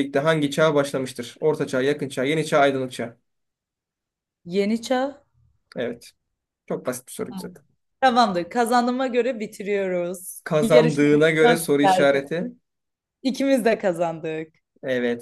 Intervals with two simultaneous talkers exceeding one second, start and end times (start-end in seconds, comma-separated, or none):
10.4-12.3